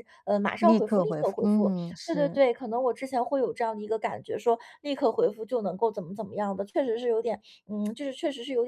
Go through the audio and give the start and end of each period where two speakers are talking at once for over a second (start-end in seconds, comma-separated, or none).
0.6-2.4